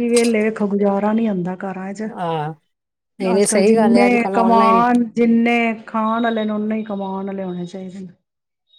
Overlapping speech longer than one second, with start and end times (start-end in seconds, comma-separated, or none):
3.4-4.8